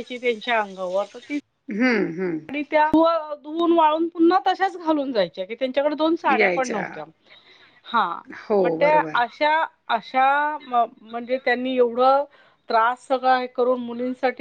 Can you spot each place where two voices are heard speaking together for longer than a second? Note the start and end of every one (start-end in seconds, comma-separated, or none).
none